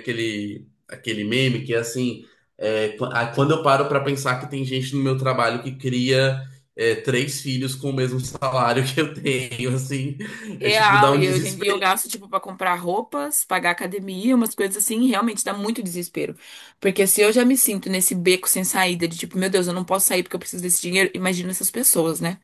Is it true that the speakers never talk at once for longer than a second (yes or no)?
no